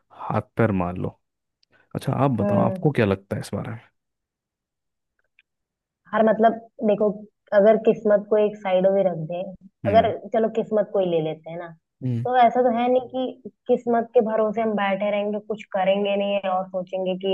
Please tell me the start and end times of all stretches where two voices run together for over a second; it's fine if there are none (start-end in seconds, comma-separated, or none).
none